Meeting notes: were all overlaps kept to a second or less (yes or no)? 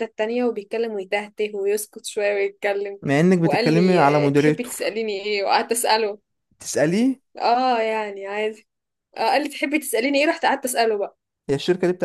no